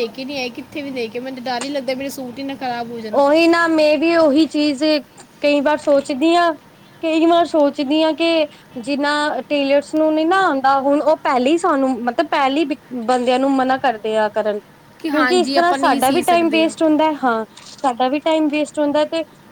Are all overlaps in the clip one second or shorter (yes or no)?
no